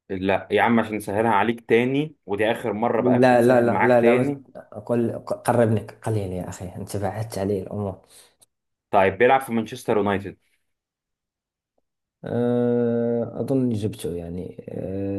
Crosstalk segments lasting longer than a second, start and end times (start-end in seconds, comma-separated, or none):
3.0-4.4